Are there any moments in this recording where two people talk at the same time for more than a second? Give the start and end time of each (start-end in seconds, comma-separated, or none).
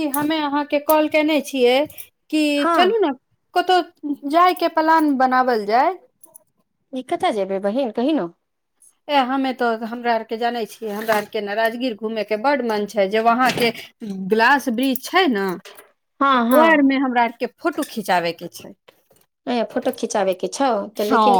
none